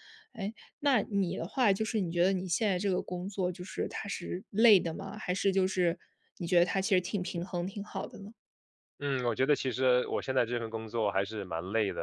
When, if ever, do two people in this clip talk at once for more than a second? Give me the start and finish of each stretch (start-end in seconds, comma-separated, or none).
none